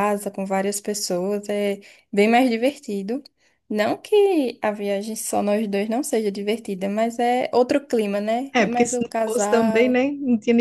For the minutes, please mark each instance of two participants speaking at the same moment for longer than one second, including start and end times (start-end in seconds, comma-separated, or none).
8.5-10.0